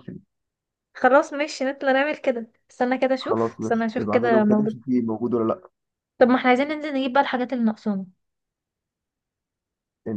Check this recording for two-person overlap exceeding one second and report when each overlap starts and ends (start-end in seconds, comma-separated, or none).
3.2-4.8